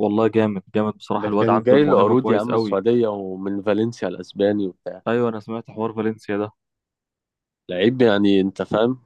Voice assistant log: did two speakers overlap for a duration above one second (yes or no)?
yes